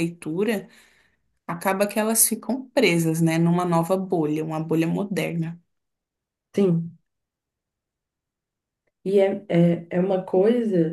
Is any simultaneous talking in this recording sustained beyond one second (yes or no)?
no